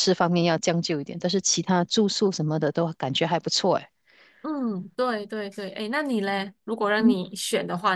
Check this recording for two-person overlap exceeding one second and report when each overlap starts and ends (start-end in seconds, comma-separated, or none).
none